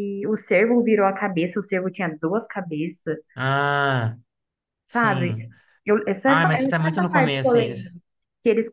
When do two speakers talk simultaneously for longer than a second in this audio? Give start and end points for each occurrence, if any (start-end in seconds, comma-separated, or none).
6.2-7.8